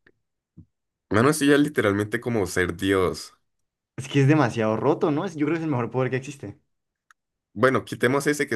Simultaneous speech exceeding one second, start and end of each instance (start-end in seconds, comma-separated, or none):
none